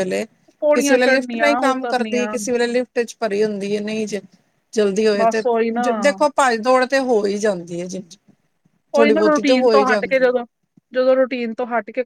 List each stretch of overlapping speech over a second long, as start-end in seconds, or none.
0.7-2.4